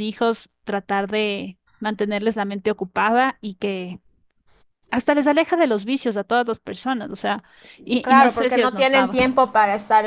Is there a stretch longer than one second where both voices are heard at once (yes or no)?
yes